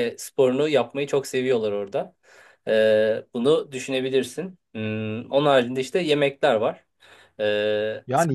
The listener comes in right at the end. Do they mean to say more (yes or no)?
yes